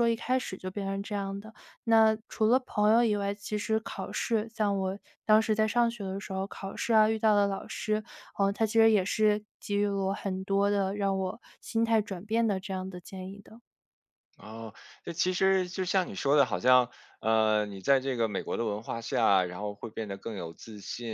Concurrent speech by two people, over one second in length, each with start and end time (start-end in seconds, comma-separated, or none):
none